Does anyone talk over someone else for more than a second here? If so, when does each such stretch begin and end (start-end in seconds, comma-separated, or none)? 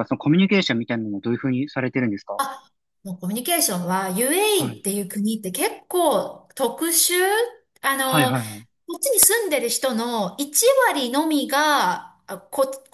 none